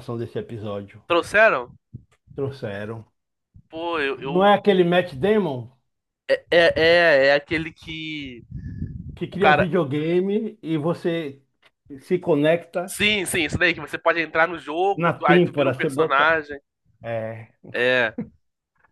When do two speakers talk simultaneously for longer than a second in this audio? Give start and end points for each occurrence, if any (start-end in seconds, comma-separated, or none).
14.9-16.3